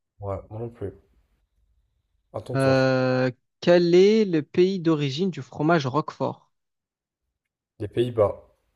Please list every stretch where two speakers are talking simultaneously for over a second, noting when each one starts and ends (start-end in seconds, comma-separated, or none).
none